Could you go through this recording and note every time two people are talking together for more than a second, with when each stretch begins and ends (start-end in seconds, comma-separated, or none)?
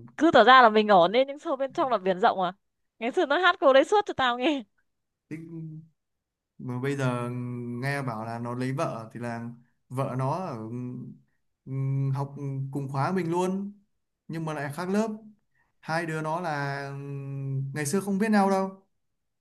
none